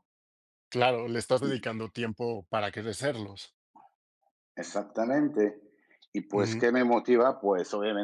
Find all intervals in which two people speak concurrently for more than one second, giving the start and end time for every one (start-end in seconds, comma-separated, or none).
none